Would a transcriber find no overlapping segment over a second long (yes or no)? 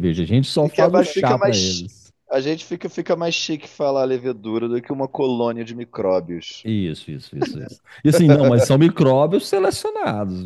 no